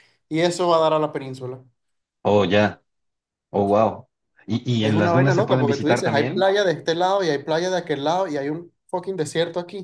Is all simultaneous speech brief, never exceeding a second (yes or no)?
no